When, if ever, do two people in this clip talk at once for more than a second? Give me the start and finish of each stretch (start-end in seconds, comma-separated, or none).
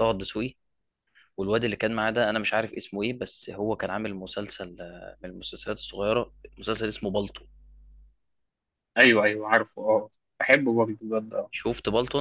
none